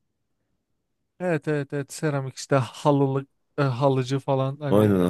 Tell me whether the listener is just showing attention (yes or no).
no